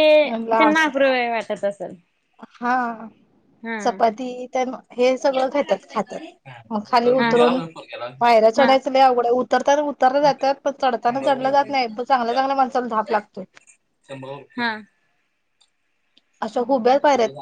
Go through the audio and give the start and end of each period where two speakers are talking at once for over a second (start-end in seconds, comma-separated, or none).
none